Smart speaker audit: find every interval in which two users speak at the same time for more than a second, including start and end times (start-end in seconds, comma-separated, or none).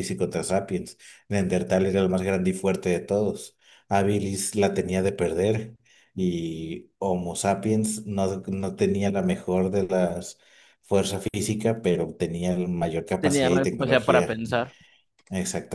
13.2-14.4